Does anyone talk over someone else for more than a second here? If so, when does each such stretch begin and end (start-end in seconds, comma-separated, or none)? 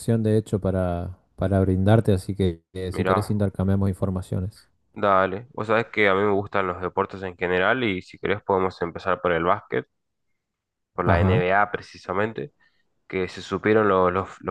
none